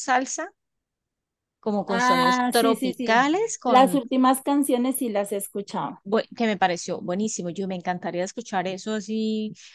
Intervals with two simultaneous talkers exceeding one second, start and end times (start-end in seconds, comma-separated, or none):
1.9-4.0